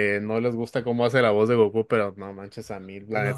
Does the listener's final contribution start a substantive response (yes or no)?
no